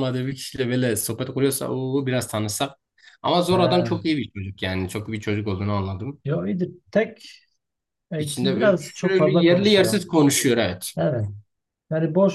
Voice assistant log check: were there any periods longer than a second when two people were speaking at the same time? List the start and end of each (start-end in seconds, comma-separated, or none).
8.2-10.1